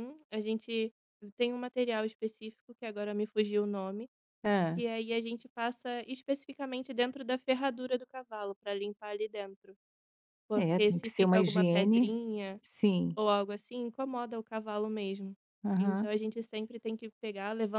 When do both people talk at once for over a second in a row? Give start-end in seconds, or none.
10.6-12.1